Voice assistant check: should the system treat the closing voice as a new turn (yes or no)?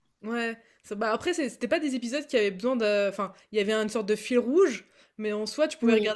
no